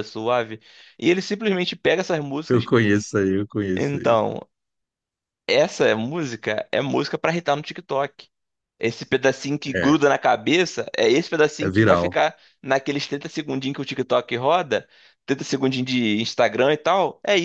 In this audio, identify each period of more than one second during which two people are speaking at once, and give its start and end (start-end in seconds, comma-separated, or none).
none